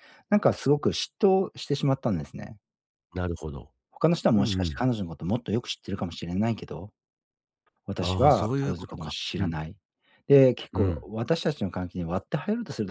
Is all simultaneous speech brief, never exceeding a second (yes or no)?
no